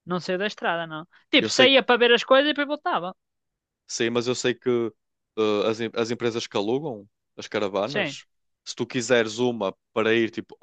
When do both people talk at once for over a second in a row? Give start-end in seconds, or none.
none